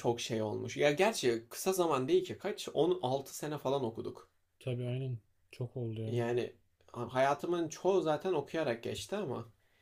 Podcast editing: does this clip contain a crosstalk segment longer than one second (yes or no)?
no